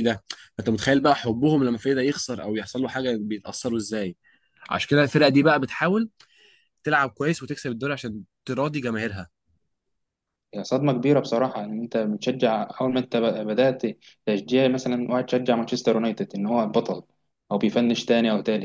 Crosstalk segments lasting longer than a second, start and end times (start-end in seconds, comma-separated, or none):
none